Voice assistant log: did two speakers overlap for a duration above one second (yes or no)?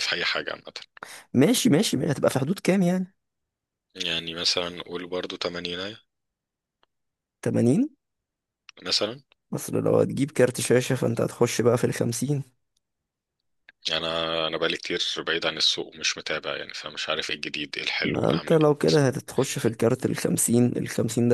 no